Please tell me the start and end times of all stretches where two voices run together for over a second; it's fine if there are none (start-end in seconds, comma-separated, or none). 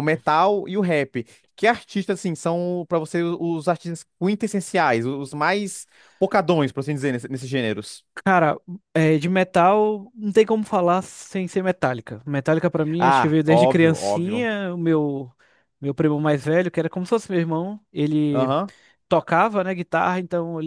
13.0-14.5